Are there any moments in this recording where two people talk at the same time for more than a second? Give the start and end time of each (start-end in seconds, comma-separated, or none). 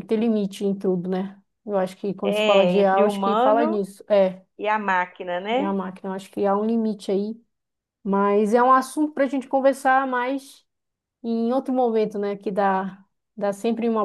2.2-3.8